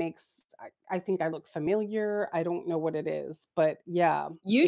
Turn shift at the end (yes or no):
yes